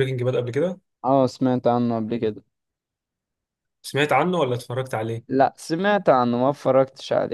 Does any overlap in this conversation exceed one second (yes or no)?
no